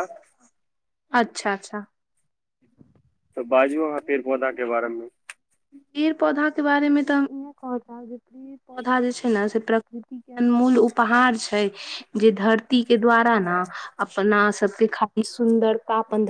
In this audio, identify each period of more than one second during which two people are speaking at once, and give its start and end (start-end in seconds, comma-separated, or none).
none